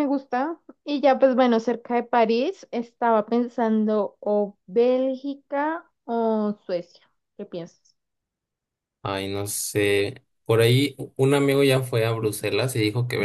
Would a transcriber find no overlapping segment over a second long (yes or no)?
yes